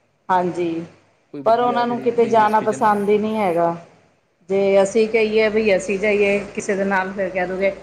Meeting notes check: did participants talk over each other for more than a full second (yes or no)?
yes